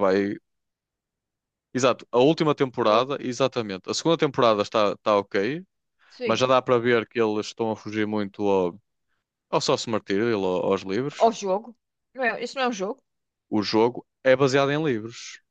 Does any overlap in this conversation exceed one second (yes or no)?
no